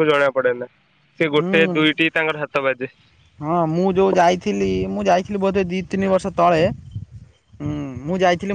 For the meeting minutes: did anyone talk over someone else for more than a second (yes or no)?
no